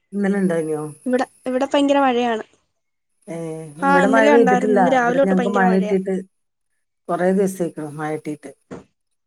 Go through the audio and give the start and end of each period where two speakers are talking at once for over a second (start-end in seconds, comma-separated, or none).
3.9-6.0